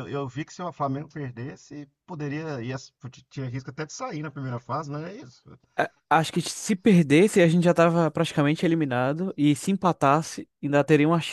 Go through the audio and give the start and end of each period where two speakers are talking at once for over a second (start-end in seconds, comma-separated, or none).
none